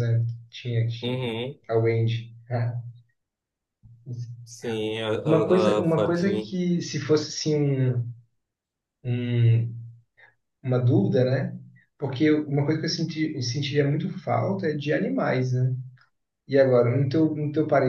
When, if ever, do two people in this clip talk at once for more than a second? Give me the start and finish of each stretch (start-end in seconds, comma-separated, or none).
5.2-6.5